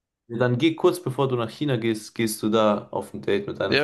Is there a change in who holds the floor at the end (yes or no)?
yes